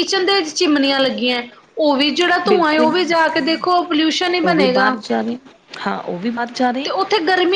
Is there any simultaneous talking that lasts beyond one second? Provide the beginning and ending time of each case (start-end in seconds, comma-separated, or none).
none